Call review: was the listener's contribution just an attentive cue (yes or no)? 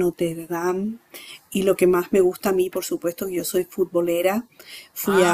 yes